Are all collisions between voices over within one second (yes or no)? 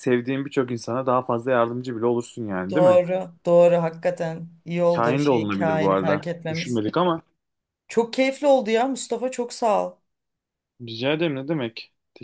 no